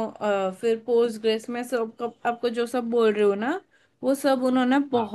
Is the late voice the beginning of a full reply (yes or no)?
no